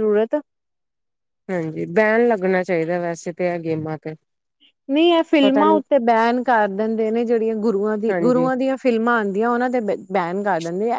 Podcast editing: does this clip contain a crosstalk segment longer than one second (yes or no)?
no